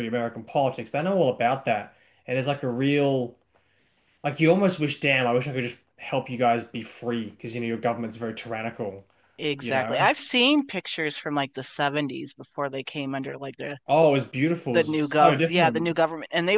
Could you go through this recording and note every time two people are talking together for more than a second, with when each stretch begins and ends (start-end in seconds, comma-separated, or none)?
14.7-15.9